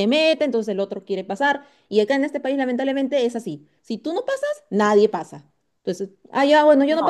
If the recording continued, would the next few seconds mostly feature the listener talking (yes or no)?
no